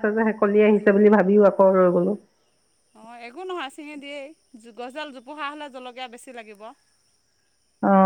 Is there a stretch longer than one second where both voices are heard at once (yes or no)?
no